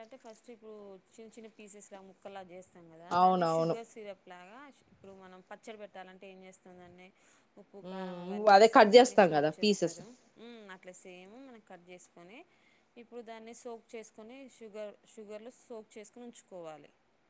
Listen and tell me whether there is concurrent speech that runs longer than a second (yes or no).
yes